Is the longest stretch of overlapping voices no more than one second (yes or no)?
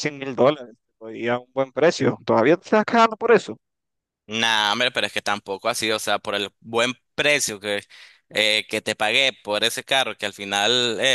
yes